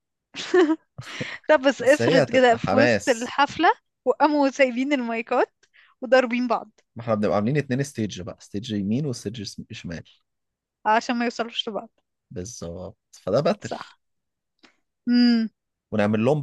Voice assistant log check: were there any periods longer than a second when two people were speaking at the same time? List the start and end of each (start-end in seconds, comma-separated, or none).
1.8-3.3